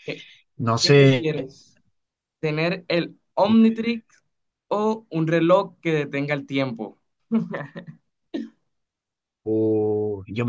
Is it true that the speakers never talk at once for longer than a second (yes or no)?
yes